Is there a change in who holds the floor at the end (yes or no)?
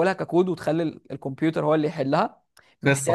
no